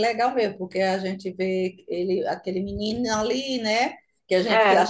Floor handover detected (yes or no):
no